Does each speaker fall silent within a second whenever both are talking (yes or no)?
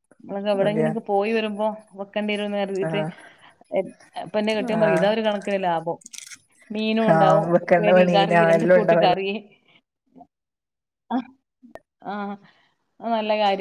no